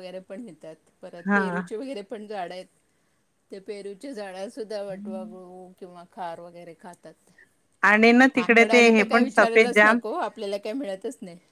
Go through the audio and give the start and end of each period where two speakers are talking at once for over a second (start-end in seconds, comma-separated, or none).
8.3-10.0